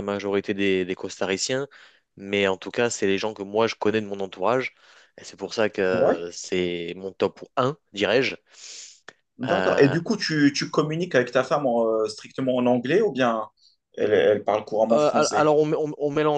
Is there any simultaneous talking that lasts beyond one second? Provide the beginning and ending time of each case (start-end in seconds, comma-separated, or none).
none